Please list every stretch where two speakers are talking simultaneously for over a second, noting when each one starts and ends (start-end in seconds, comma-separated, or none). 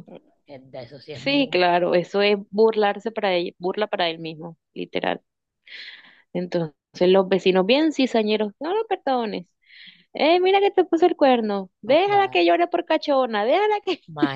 none